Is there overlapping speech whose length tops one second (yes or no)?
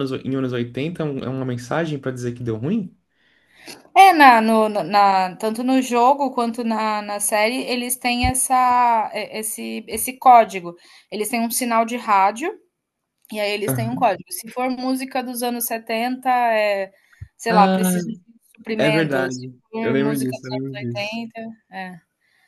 yes